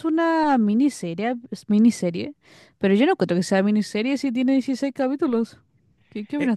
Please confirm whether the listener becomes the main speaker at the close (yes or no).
yes